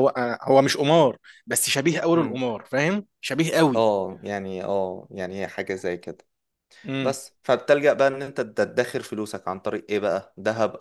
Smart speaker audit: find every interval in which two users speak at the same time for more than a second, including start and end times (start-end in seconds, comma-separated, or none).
none